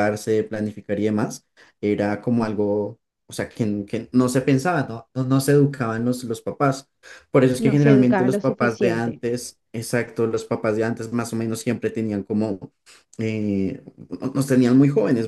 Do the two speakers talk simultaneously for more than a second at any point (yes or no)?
yes